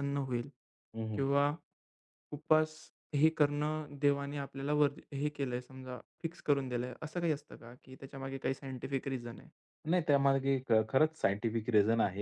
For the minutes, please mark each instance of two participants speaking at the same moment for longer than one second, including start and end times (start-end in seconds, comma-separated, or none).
none